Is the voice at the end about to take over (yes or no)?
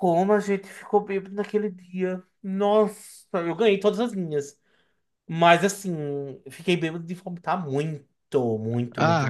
yes